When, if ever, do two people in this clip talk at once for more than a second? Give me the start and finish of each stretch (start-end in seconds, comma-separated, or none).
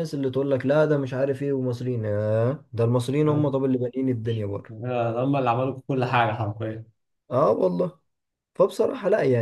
none